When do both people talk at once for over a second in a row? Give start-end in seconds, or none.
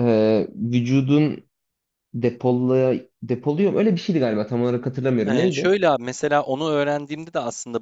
none